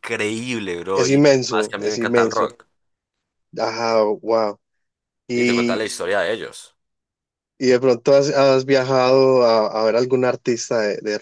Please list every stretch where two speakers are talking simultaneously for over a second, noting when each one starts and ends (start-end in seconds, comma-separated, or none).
0.9-2.5